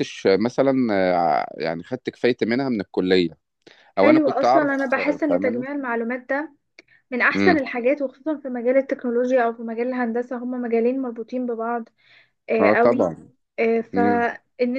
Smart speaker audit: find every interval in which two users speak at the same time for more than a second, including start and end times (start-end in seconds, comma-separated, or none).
4.0-5.6